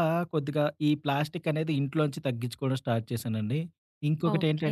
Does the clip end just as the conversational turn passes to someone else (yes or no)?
yes